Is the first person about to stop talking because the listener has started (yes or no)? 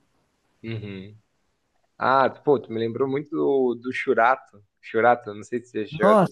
yes